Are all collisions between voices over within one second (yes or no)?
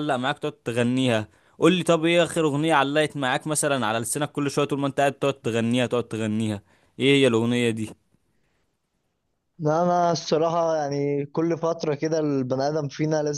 yes